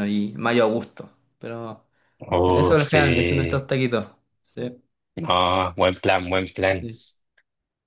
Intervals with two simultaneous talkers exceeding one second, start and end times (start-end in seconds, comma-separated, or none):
none